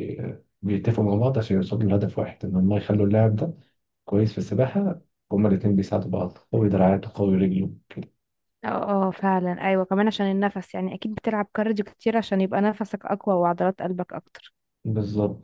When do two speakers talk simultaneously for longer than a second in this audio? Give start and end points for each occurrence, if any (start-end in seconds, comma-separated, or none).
none